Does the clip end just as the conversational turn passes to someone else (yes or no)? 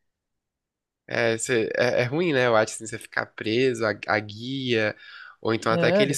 no